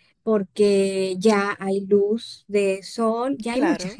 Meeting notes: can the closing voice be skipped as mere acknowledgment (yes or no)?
yes